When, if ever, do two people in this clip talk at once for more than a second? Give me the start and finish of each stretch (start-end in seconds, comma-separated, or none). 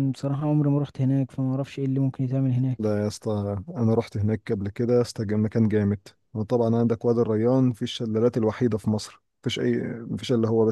none